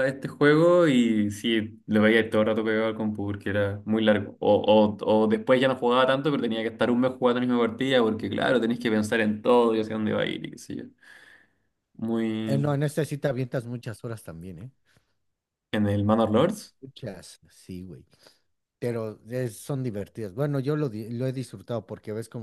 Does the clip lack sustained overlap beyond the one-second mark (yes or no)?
yes